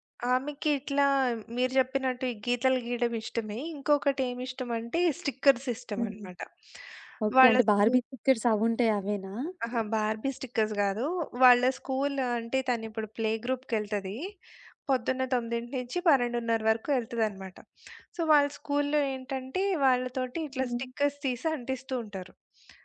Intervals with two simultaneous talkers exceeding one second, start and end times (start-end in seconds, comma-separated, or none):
none